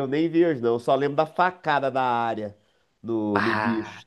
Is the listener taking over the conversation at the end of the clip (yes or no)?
no